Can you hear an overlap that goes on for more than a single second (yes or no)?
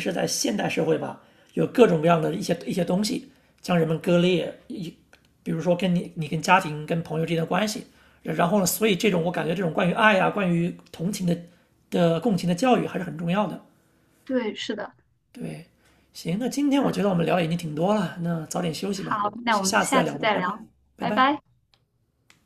yes